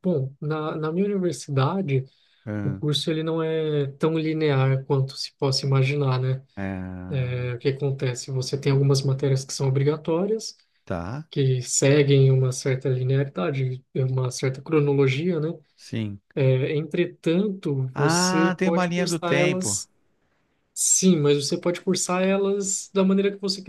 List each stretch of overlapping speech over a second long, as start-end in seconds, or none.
17.9-19.8